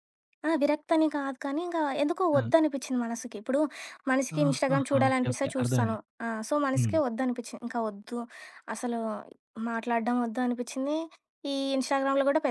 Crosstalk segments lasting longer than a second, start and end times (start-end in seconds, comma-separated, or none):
4.4-6.0